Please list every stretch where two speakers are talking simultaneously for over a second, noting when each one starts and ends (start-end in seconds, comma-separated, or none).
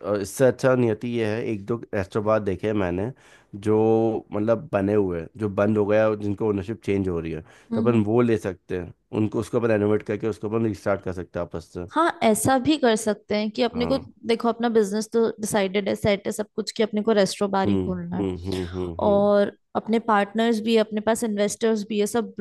none